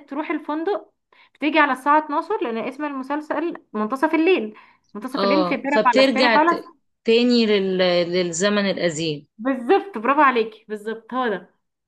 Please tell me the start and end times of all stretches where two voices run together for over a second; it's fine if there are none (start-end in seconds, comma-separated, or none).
5.1-6.6